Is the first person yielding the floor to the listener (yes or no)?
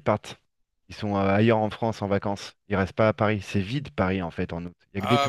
yes